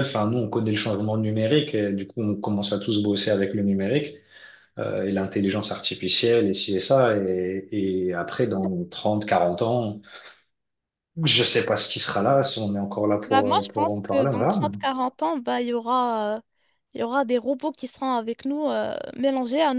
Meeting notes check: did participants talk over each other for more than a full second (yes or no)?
yes